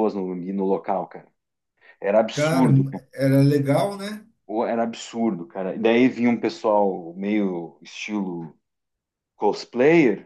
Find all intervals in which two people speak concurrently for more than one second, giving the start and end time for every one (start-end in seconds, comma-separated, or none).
none